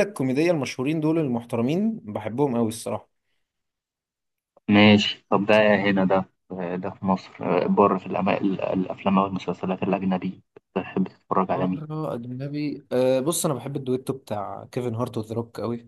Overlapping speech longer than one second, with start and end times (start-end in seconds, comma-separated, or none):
none